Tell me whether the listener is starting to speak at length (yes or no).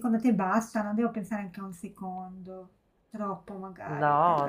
yes